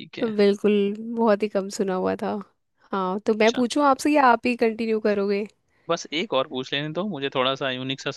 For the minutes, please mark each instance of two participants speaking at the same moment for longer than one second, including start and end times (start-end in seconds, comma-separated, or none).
none